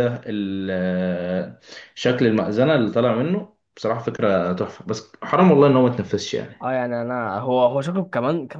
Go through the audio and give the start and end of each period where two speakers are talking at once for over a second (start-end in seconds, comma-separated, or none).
none